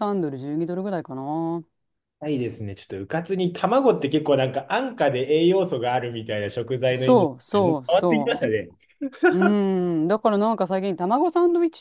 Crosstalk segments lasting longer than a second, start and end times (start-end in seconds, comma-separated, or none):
6.9-8.5